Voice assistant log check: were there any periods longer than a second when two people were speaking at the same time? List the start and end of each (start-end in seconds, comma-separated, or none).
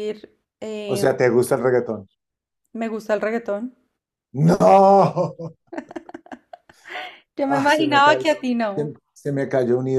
7.4-8.9